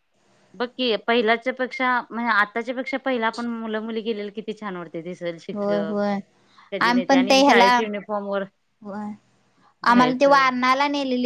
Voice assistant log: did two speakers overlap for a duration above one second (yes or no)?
no